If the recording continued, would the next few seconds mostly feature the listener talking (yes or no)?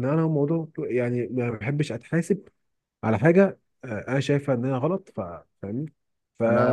no